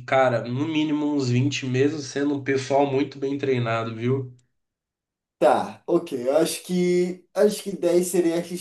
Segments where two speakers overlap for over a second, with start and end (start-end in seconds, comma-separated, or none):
none